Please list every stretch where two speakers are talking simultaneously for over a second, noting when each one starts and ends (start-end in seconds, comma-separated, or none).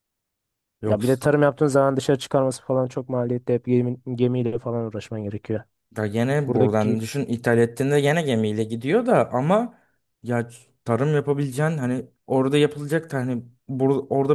none